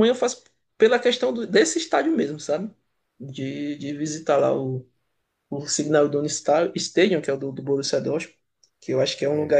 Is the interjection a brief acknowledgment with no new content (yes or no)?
yes